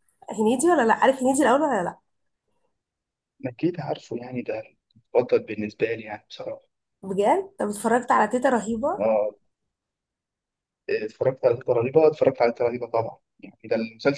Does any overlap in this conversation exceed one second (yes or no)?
no